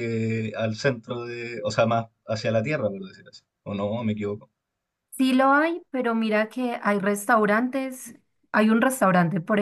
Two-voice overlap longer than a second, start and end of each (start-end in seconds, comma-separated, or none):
none